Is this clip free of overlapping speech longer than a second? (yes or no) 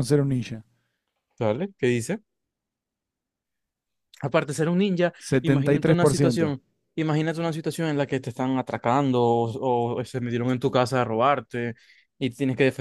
no